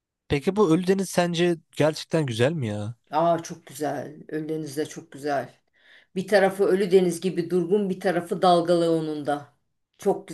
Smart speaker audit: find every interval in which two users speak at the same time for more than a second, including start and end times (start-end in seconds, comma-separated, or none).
none